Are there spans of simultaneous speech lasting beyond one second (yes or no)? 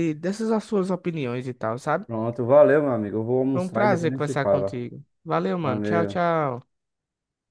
yes